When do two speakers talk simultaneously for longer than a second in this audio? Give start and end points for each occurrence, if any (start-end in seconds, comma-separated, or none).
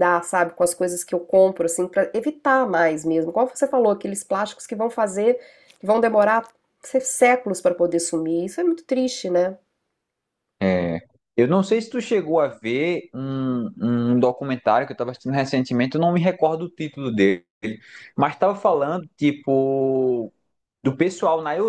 none